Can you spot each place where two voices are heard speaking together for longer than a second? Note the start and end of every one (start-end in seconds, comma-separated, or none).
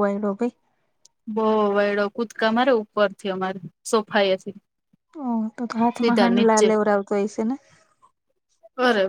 none